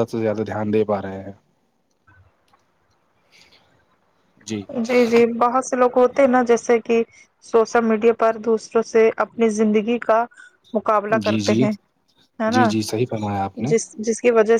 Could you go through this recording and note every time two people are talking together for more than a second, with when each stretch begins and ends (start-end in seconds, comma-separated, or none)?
none